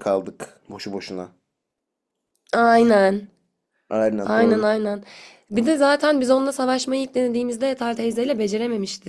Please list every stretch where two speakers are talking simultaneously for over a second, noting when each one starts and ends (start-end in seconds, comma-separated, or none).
none